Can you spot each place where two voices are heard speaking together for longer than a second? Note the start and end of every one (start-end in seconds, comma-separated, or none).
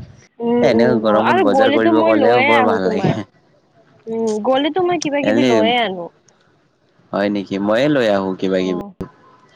0.7-3.1